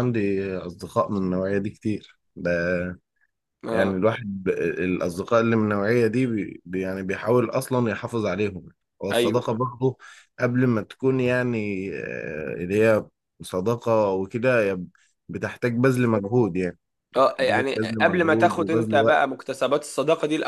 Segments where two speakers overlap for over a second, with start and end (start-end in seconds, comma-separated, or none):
17.1-19.3